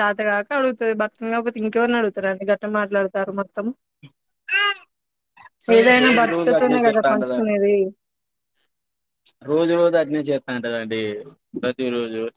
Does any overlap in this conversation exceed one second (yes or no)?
yes